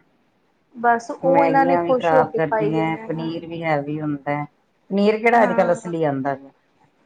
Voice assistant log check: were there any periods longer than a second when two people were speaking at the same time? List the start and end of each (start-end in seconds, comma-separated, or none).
1.2-3.1